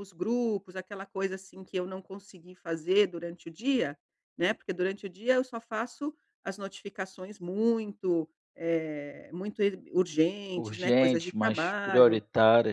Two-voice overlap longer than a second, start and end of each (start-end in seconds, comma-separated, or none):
10.6-12.2